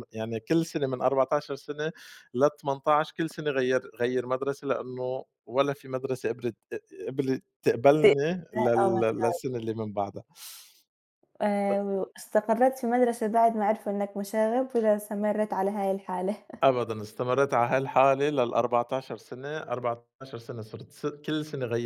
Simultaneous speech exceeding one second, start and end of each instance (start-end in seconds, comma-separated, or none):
none